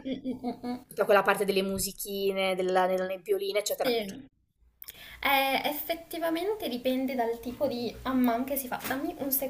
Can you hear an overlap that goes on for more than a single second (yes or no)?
no